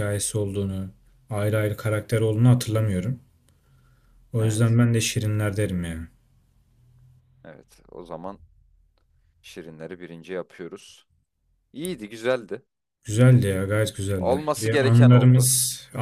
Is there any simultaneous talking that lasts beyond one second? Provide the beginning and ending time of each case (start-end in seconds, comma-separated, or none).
14.2-15.5